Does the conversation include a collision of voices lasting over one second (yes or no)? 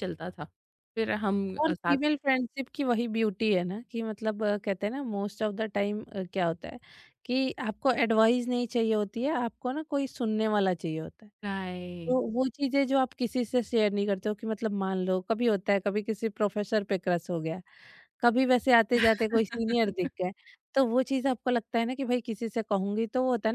no